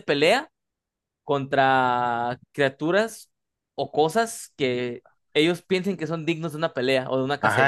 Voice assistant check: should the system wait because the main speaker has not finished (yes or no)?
no